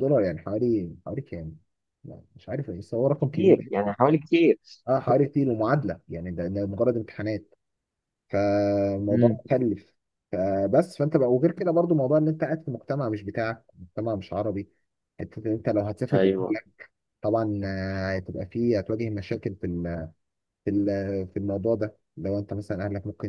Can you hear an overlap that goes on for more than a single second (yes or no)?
no